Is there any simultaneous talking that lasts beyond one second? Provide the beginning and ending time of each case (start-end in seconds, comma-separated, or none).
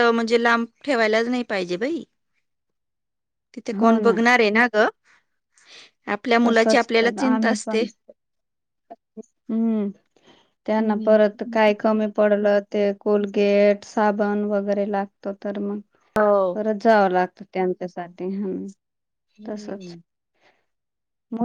6.5-7.8